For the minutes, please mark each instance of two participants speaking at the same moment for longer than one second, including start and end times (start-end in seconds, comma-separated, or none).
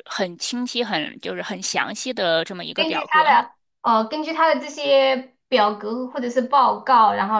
none